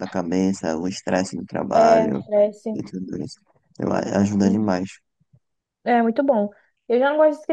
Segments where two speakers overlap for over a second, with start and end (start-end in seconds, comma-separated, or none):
none